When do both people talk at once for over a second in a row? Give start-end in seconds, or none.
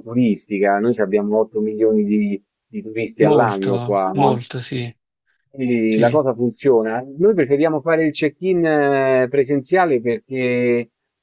3.2-4.4